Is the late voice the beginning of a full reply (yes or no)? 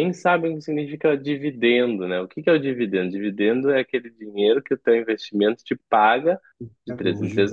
no